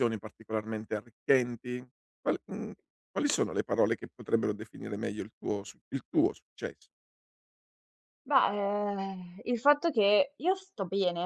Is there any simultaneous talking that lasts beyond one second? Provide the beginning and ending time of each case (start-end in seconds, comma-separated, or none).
none